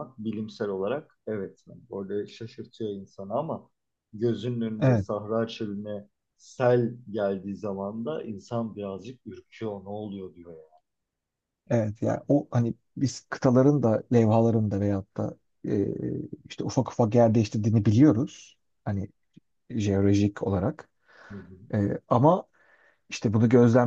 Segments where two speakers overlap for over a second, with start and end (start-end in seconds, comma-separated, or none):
none